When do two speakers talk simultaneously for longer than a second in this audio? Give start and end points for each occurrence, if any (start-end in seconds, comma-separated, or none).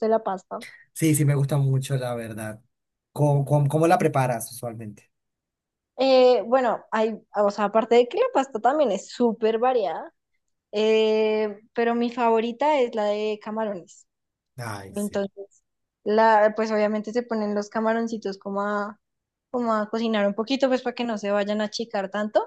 none